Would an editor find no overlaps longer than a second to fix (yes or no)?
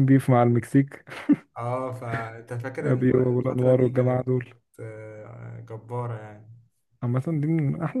no